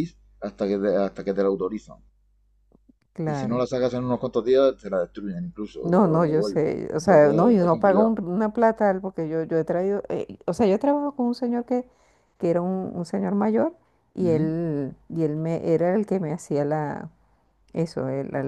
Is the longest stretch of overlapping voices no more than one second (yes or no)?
no